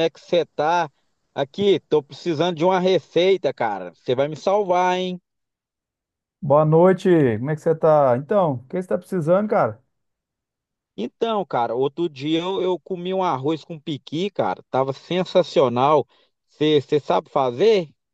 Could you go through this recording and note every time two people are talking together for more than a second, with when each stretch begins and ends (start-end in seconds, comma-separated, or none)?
none